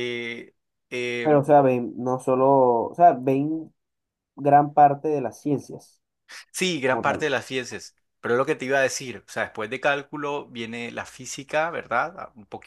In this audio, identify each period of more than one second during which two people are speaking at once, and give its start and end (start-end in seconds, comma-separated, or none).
none